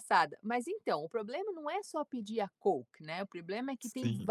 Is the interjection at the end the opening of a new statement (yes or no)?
no